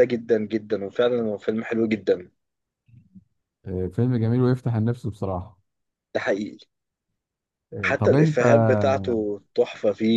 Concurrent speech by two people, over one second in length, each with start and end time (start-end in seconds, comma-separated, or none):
none